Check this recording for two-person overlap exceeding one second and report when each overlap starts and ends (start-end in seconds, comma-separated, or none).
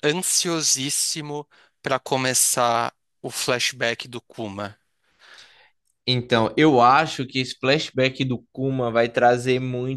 none